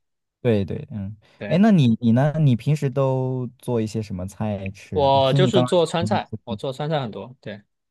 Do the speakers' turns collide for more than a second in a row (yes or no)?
yes